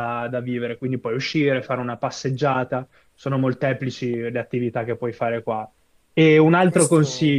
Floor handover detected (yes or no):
no